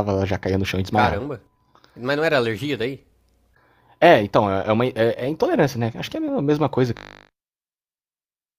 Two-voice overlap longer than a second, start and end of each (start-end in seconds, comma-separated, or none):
none